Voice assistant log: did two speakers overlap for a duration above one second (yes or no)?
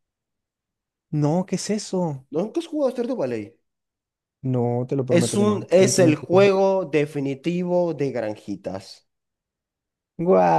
yes